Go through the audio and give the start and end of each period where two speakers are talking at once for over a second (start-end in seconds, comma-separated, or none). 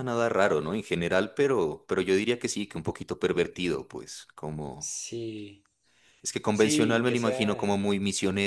6.5-7.8